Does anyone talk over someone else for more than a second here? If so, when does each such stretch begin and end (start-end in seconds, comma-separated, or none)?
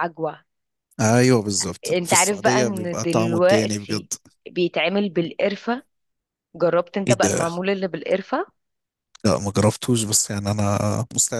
1.9-4.1